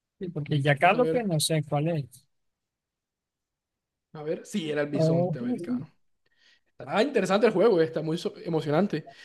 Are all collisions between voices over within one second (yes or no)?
yes